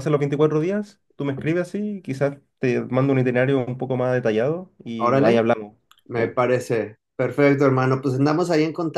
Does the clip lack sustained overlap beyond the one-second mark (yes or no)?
yes